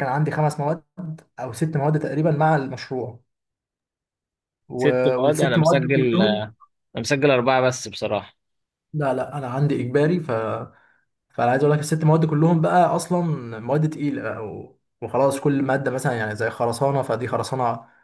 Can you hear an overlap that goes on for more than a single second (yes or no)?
yes